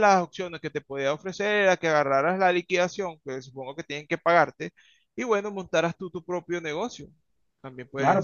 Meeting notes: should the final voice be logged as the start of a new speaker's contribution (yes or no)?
yes